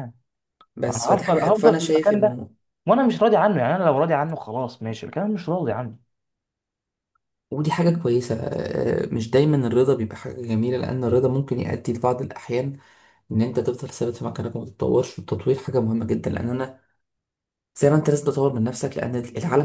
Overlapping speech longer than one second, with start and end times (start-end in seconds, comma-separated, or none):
0.9-2.4